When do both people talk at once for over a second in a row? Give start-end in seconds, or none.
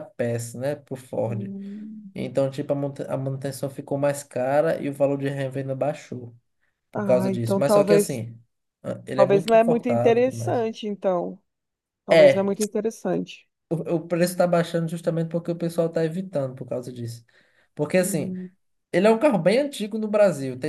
6.9-8.2, 9.1-10.7